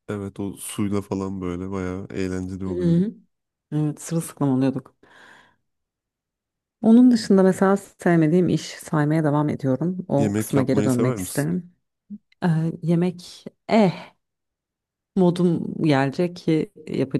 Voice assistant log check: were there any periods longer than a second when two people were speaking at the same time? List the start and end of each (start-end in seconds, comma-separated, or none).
10.2-11.5